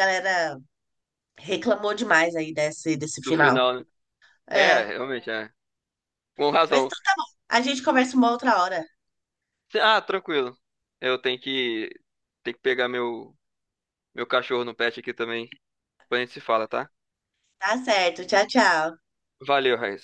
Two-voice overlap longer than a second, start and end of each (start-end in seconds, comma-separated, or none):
none